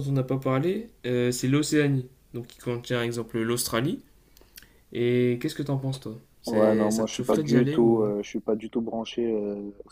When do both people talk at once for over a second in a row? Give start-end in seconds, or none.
6.5-8.1